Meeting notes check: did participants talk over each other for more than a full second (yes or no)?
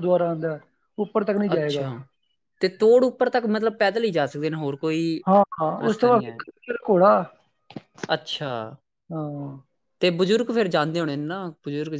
no